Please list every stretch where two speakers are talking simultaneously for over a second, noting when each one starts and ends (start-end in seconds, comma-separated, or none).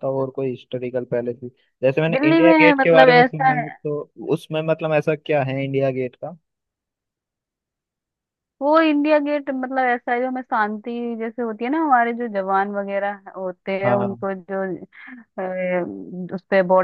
2.1-3.6